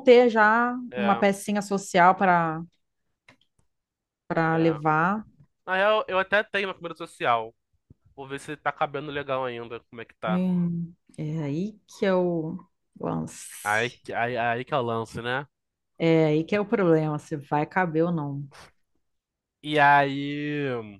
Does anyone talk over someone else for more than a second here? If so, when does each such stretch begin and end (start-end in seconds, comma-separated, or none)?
none